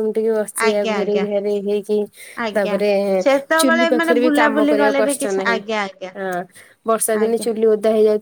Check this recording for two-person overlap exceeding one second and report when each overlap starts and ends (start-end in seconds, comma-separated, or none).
3.6-5.6